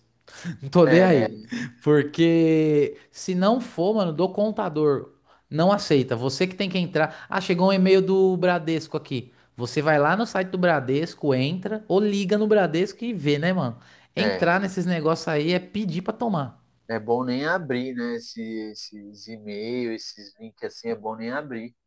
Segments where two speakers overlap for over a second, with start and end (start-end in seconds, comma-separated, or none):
none